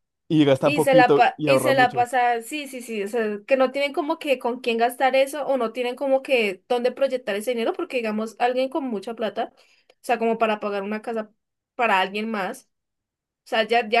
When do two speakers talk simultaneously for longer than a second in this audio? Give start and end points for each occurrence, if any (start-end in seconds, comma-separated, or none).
0.6-2.0